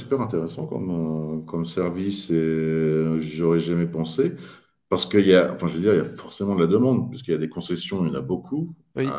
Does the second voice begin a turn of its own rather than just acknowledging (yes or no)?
no